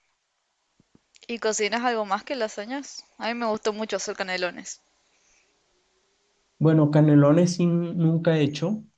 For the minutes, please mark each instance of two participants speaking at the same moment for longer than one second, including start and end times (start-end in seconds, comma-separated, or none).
none